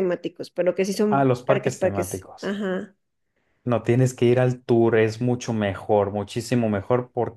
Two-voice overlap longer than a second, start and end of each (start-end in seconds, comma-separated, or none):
1.1-2.6